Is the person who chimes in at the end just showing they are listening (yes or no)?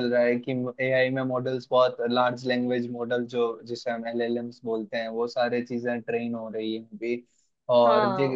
yes